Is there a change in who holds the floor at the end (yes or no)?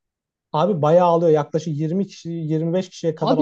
yes